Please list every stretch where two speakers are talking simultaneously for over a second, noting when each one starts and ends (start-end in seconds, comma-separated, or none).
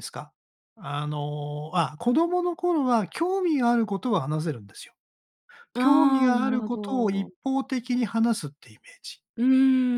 5.8-7.3